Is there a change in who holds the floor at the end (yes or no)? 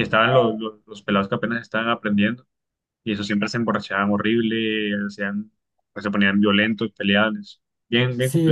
yes